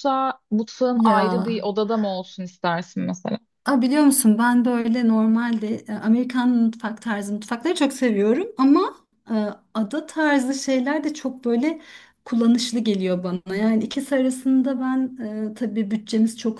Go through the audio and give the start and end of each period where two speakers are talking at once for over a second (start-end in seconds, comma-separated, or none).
none